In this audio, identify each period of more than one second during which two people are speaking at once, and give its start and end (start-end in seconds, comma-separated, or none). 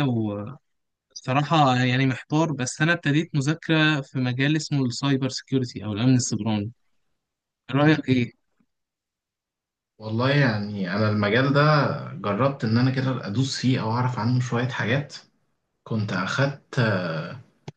none